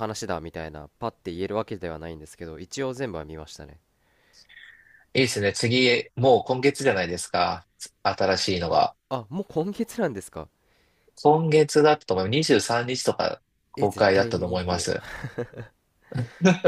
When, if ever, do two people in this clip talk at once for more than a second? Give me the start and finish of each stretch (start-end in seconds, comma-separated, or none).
13.8-15.0